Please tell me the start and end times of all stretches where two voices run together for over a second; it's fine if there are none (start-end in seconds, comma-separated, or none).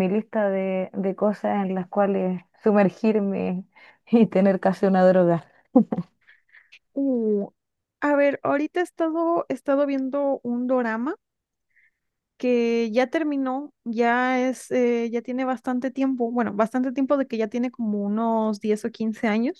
none